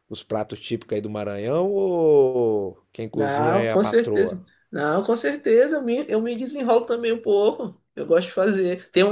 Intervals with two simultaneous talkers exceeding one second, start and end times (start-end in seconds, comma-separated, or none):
3.1-4.4